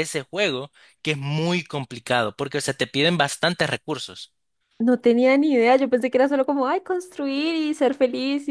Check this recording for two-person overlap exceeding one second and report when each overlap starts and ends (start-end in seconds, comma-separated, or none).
none